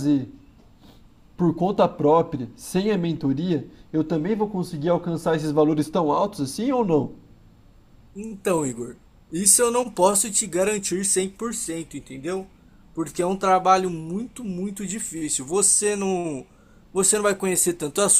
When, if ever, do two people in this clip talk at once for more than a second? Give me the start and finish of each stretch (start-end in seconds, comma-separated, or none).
none